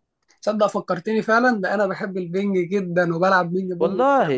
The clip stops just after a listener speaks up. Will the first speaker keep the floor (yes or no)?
no